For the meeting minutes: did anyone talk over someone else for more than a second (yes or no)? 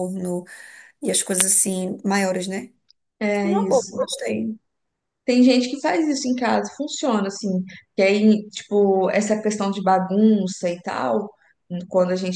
no